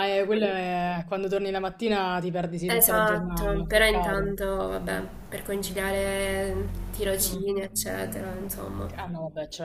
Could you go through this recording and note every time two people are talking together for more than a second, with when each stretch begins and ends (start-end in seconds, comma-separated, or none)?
2.7-4.3